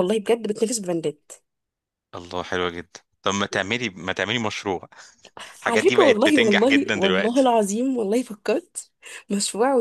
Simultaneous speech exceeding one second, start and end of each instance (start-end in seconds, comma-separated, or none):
5.7-7.5